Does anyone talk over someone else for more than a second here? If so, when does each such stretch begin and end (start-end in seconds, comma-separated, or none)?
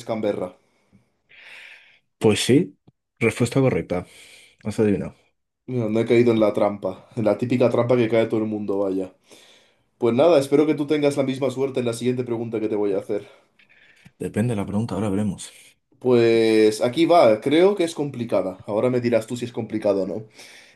none